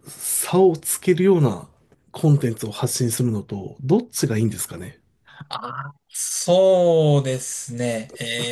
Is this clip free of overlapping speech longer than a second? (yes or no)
yes